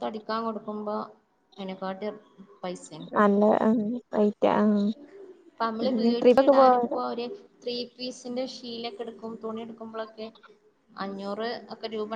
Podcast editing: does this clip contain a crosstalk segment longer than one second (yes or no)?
yes